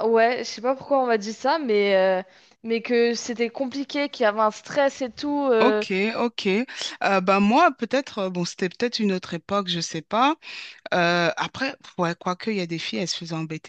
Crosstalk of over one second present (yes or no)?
no